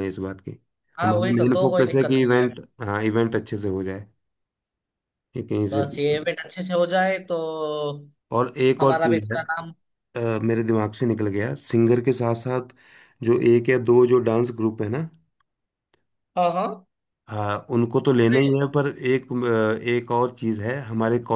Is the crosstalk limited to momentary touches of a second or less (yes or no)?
no